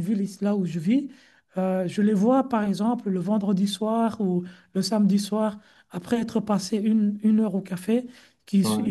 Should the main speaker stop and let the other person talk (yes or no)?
no